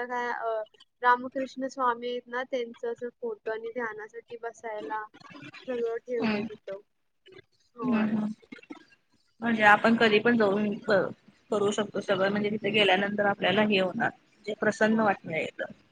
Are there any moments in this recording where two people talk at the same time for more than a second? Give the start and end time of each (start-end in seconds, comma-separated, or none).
none